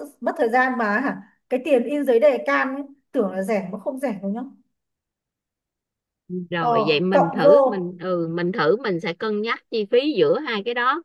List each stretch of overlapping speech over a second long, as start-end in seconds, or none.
6.6-7.8